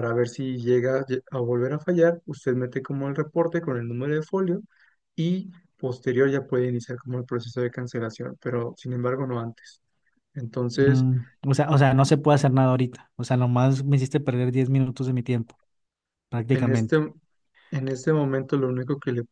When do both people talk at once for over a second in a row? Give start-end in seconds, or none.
none